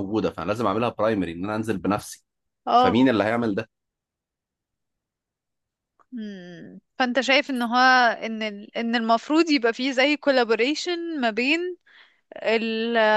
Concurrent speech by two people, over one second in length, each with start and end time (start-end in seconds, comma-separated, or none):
none